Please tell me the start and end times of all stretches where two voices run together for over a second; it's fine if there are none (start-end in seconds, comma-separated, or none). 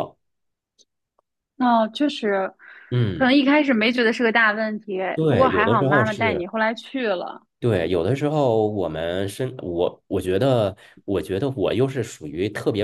5.1-6.5